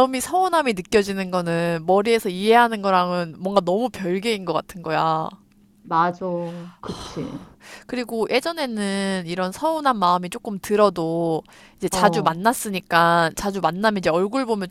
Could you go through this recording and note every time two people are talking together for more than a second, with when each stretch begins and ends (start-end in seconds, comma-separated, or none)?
none